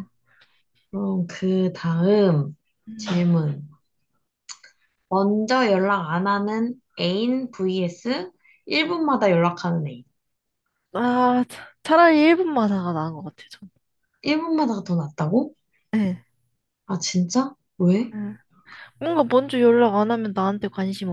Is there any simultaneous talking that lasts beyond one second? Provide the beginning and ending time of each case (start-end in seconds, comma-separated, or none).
none